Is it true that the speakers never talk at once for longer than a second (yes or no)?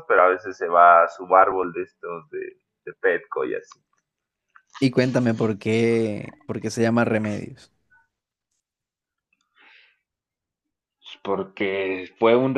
yes